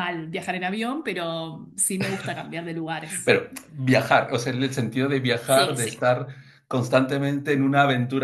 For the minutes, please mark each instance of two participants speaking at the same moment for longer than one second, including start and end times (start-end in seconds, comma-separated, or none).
none